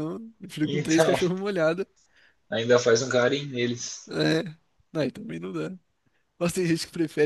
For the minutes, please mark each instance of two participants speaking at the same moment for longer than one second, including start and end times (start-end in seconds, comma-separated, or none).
none